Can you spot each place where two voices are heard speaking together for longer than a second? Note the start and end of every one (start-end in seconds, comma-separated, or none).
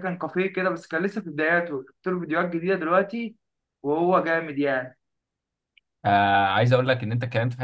none